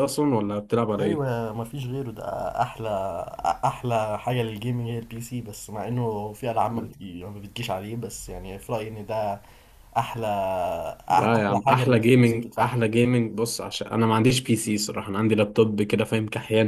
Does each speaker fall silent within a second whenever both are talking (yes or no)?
no